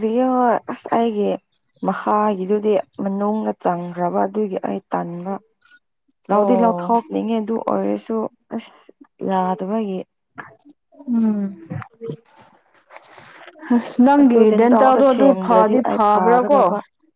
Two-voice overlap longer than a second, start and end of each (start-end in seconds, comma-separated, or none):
14.2-16.0